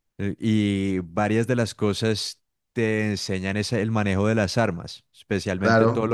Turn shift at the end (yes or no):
yes